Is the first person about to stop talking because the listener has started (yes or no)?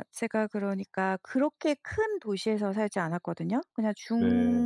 no